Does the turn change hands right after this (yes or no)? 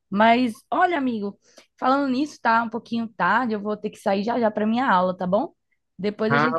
yes